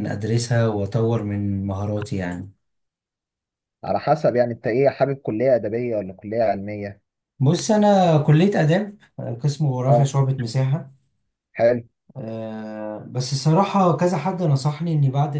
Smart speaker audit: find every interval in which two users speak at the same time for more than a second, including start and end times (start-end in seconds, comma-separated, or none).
none